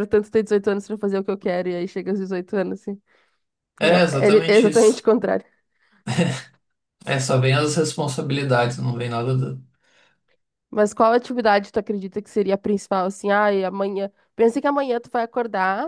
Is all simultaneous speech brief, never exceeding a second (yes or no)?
no